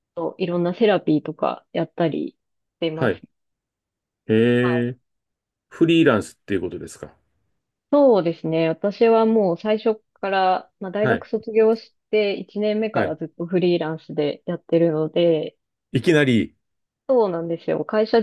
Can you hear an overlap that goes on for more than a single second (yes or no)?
no